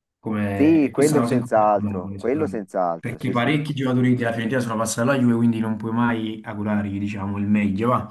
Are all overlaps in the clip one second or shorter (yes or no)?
no